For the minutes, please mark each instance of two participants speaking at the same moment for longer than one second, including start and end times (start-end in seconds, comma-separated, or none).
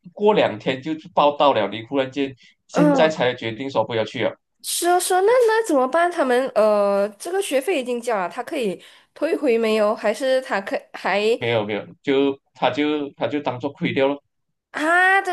none